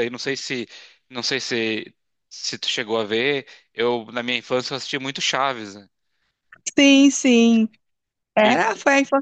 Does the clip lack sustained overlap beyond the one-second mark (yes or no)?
yes